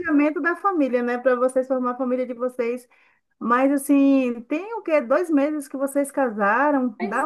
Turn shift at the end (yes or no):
no